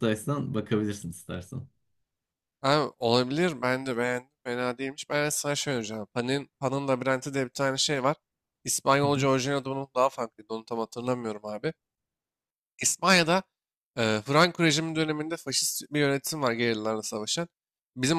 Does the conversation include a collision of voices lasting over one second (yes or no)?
no